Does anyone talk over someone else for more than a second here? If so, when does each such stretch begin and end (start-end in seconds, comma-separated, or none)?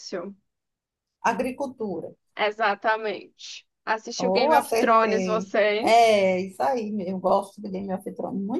4.2-6.0